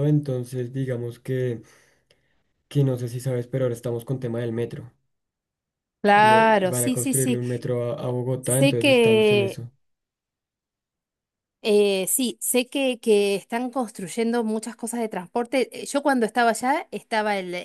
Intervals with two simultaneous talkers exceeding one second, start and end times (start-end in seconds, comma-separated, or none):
6.1-7.4, 8.4-9.6